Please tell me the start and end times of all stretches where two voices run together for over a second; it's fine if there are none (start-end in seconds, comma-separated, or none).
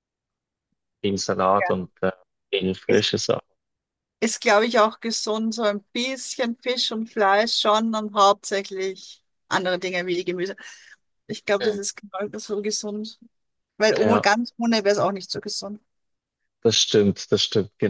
none